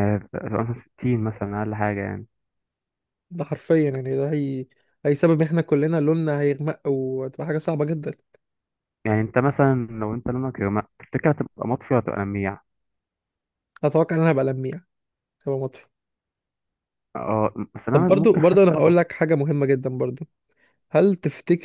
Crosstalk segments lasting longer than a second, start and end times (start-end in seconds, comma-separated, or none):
17.9-19.1